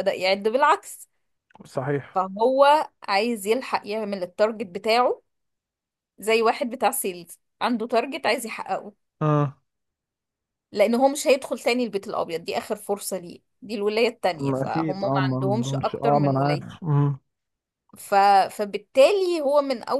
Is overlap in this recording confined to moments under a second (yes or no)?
no